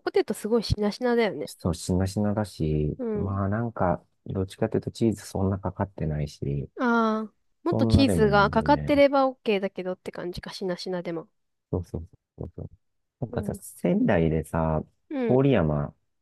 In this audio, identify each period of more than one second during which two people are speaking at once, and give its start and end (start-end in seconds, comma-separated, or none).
7.7-9.0